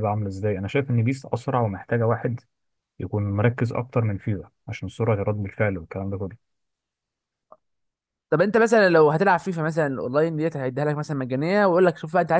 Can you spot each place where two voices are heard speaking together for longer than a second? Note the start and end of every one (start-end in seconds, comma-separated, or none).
none